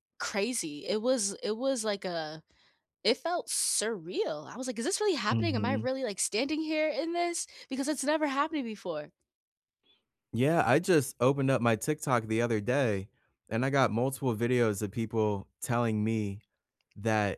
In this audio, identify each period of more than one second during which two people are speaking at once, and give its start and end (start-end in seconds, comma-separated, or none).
none